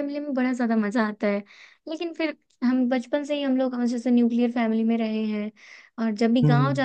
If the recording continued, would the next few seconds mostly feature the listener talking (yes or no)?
no